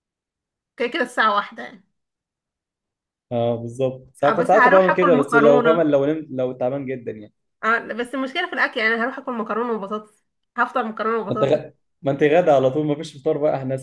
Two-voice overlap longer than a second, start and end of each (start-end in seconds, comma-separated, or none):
4.2-5.8